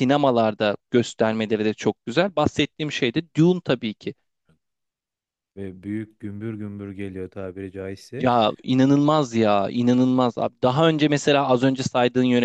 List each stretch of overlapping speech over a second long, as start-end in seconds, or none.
none